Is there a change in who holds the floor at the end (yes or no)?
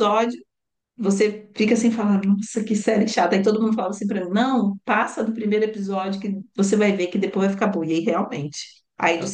no